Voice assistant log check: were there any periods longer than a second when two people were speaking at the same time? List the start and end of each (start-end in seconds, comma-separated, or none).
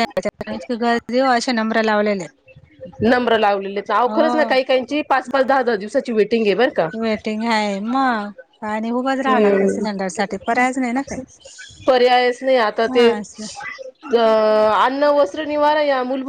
none